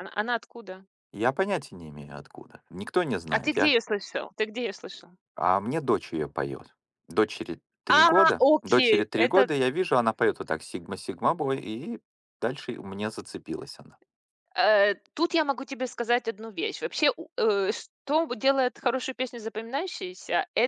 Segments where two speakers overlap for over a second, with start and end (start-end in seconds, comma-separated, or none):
7.9-9.5